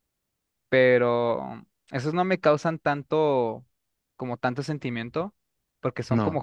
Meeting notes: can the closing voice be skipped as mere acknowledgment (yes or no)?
yes